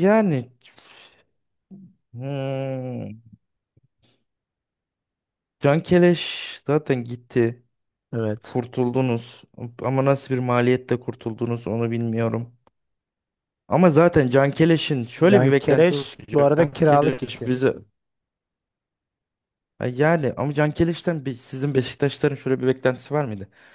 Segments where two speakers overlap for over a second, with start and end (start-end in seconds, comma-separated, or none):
15.3-17.5